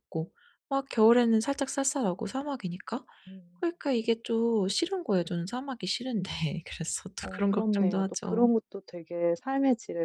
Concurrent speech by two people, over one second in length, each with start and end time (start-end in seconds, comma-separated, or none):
7.2-8.5